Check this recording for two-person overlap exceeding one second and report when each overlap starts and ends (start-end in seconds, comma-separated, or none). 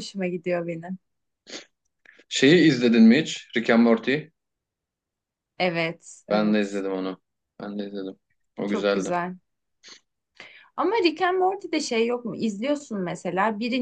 none